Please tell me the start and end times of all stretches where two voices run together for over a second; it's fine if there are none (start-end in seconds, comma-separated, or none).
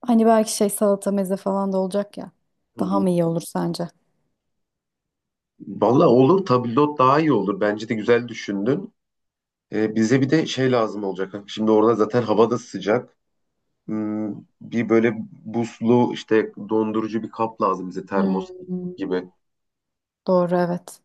none